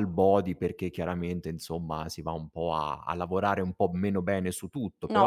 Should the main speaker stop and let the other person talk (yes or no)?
yes